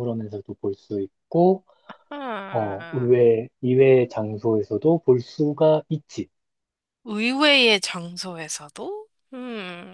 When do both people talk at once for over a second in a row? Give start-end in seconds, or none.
none